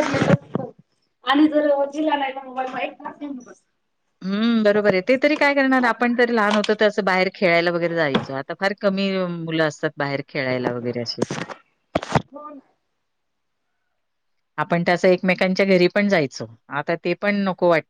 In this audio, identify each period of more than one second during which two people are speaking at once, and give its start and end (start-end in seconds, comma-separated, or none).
none